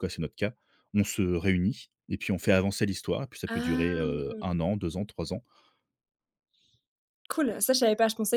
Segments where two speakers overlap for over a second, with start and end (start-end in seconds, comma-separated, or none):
3.5-4.7